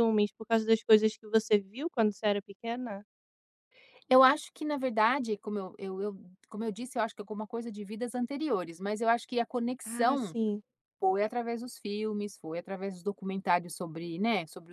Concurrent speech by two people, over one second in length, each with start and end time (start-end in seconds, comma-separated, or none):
none